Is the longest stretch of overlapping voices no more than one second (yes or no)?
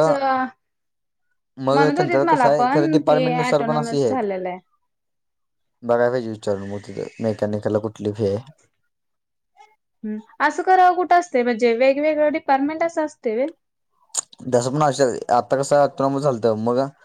no